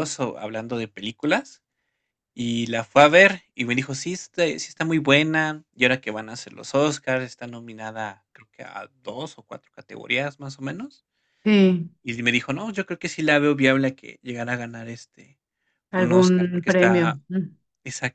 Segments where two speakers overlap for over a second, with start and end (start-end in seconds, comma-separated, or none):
15.9-17.2